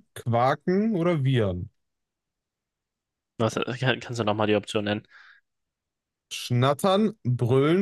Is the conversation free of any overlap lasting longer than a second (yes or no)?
yes